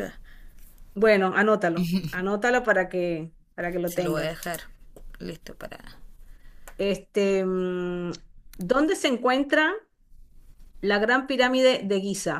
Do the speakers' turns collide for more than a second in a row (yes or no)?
no